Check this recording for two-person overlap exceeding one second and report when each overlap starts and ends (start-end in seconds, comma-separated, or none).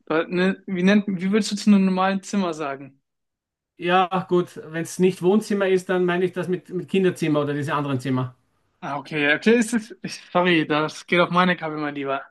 none